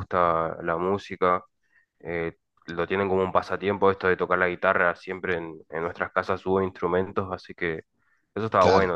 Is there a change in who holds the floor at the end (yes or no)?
yes